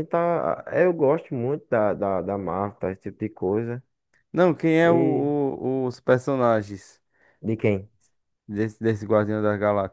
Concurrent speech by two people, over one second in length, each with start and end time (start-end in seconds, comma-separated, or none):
none